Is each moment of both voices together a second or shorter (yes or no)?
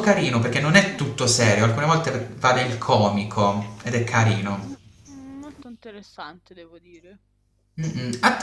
yes